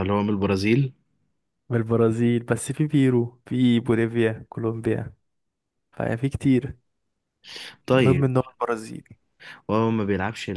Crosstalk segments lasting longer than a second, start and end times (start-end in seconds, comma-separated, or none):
none